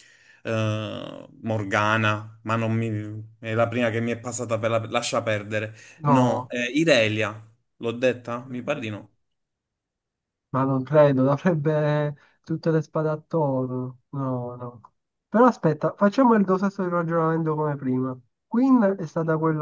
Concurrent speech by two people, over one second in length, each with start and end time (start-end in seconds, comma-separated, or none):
none